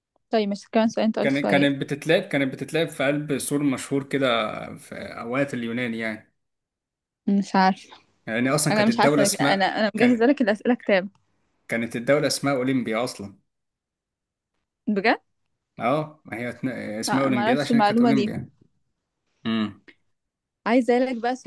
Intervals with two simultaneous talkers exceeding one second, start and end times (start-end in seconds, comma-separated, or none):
8.7-10.2, 17.1-18.3